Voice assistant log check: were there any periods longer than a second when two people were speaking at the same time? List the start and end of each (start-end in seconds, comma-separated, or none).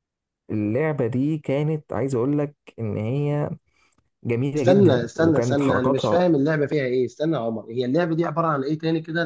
4.5-6.2